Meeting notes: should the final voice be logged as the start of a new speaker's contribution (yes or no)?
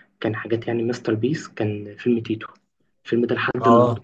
no